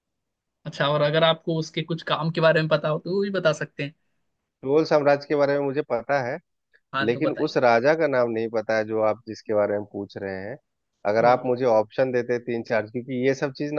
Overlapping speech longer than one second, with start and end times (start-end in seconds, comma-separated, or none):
none